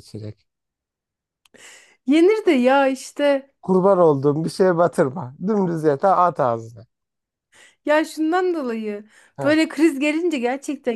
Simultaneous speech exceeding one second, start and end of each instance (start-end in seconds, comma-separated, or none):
none